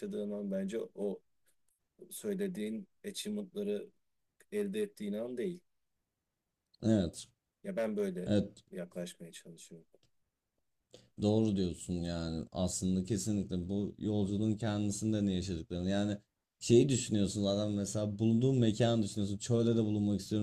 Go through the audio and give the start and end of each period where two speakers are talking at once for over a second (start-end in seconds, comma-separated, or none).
none